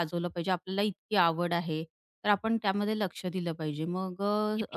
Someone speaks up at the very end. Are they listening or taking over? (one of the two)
taking over